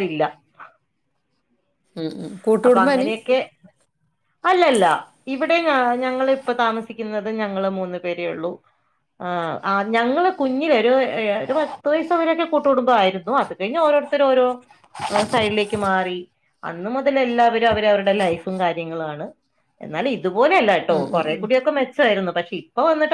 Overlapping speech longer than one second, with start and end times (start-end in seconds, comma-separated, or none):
none